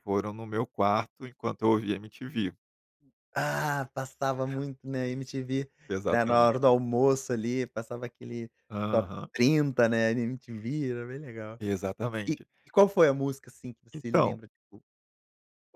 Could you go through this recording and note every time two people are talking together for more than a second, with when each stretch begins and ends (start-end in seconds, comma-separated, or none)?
none